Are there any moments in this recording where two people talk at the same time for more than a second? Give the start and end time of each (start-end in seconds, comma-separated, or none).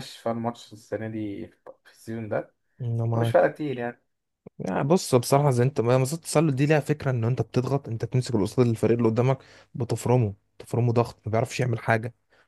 none